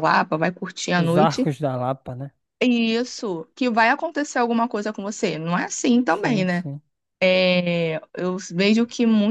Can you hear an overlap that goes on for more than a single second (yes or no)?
no